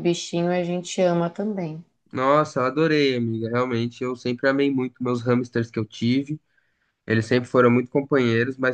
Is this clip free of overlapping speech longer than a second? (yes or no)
yes